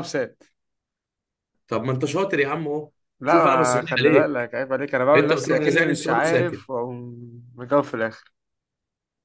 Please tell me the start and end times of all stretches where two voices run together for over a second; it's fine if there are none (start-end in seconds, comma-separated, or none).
3.2-4.5, 5.1-6.6